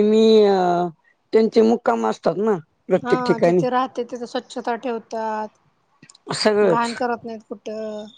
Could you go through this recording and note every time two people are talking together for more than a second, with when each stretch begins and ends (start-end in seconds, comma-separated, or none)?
none